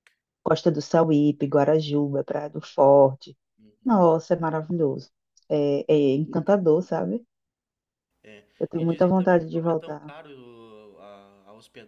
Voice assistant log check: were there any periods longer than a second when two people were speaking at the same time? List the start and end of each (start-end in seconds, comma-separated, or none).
8.8-10.1